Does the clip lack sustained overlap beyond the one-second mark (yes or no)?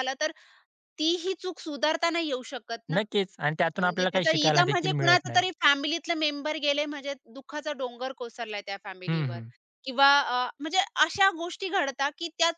no